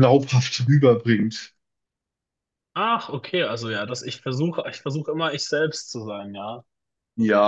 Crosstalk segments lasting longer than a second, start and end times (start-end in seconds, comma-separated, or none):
none